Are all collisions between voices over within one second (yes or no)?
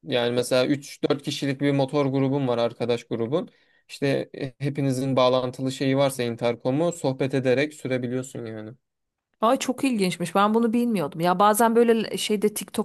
yes